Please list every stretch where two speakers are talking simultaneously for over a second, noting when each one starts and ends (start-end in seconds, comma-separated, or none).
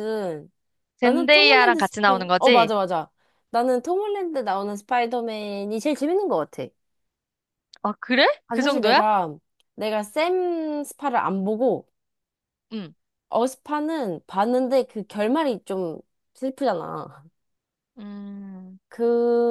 1.0-2.7